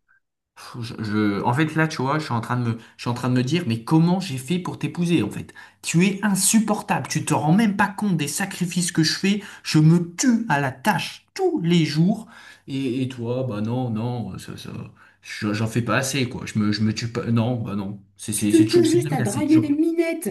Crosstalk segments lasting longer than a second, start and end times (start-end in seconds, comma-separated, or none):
18.4-19.7